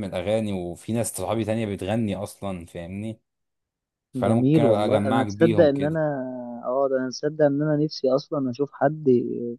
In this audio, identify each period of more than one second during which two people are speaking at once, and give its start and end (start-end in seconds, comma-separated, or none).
4.2-6.0